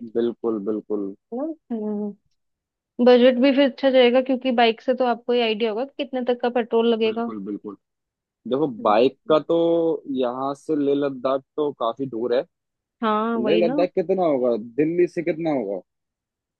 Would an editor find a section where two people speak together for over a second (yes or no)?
no